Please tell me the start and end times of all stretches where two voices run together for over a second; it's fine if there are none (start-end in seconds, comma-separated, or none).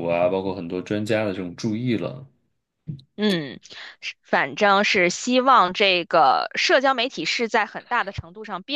none